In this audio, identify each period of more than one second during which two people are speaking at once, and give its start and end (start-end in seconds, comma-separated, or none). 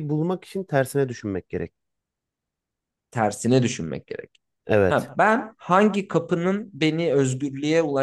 none